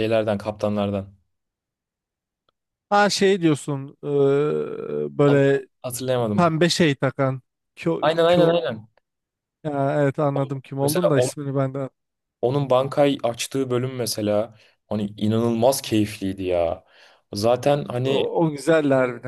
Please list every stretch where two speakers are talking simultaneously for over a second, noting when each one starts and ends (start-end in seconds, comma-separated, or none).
none